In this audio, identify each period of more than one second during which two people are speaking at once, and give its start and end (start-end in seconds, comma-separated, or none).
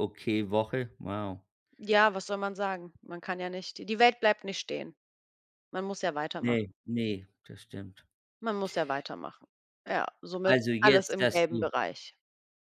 10.4-11.7